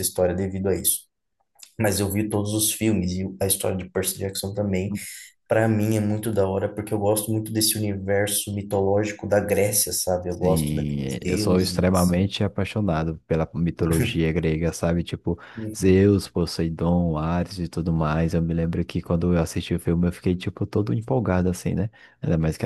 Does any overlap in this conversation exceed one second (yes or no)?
yes